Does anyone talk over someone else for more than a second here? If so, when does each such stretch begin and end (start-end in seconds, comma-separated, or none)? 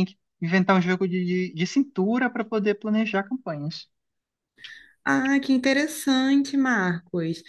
none